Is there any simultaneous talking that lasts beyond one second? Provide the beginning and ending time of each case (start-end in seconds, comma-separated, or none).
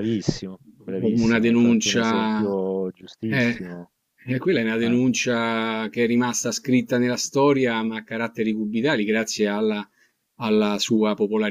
1.0-2.6